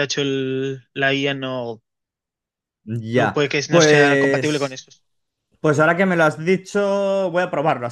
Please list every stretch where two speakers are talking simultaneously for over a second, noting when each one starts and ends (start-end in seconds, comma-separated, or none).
3.1-4.8